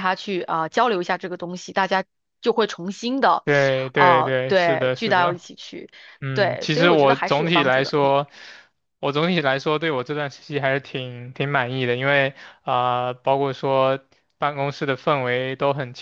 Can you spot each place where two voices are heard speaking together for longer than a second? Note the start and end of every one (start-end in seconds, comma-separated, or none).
3.9-5.4, 6.3-7.9